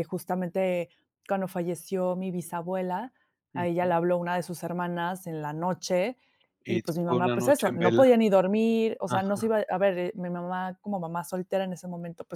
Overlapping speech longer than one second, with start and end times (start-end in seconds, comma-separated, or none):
6.7-8.0